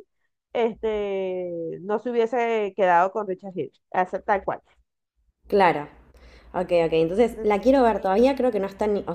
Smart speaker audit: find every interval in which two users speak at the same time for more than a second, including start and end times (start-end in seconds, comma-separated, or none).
none